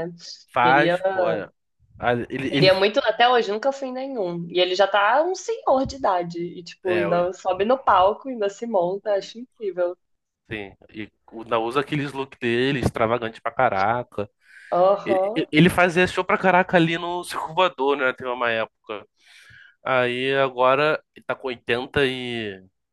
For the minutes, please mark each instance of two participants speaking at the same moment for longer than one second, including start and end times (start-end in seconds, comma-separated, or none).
none